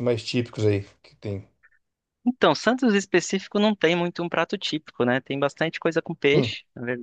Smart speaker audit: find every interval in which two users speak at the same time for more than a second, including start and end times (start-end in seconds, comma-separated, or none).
none